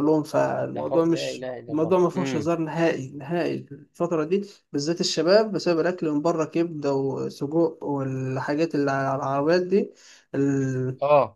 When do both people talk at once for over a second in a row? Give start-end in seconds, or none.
0.7-2.5